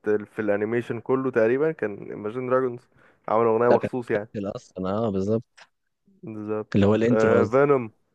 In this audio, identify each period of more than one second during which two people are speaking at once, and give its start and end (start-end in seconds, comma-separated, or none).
none